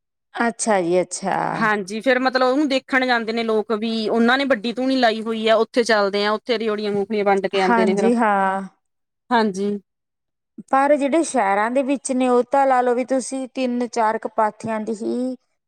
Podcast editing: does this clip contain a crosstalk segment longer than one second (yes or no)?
no